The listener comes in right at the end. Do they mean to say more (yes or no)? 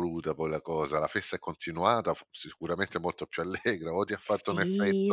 yes